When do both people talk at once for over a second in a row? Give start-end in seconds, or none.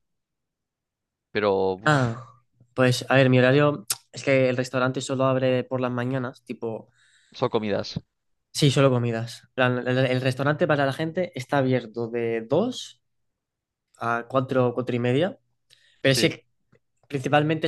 none